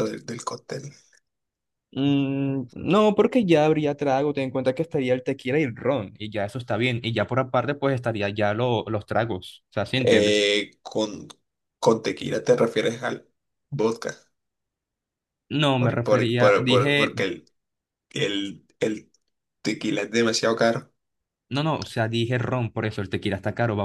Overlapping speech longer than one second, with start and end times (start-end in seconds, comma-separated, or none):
15.8-17.1